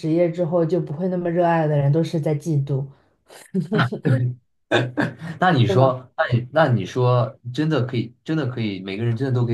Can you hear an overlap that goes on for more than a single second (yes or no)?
no